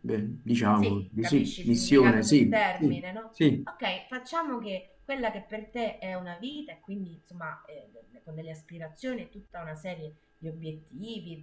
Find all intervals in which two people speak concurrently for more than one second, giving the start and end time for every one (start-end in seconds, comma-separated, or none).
0.7-3.7